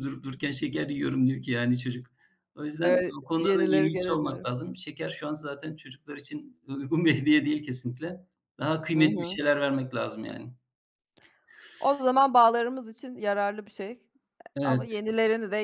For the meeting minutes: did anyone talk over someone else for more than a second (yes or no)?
yes